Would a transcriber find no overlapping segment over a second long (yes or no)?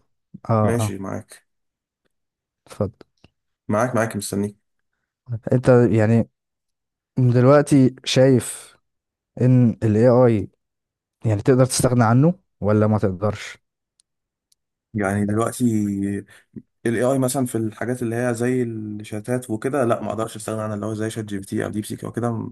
yes